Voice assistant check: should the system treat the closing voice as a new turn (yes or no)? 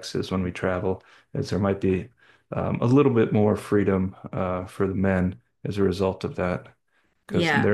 no